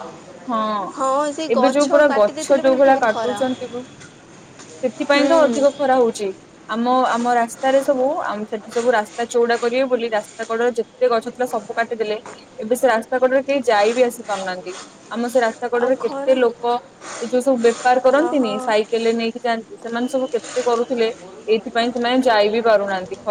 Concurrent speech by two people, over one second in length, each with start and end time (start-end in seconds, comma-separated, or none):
1.5-3.4